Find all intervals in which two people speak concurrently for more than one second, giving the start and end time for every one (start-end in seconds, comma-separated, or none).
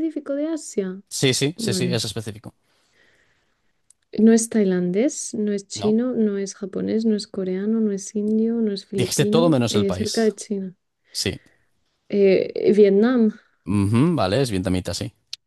8.9-10.3